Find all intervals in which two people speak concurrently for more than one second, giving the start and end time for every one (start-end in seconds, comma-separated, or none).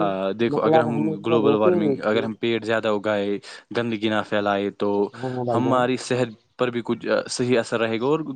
0.5-2.3